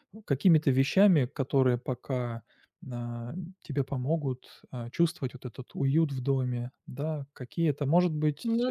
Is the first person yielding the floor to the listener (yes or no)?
no